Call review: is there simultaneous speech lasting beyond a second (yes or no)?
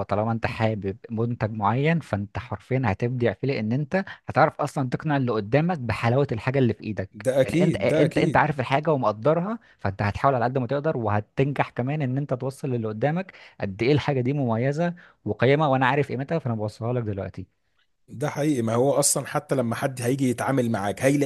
yes